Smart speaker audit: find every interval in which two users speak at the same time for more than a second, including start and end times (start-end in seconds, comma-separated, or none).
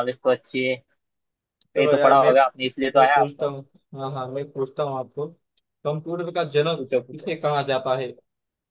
none